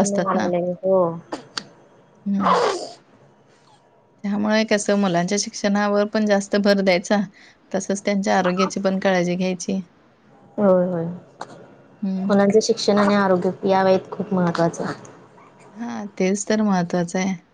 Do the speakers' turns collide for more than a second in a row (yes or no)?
no